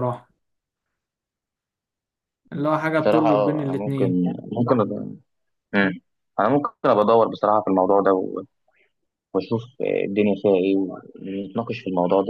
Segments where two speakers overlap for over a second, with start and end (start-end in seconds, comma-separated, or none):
3.0-4.2